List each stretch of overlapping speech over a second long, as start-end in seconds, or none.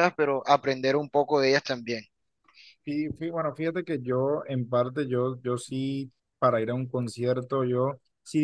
none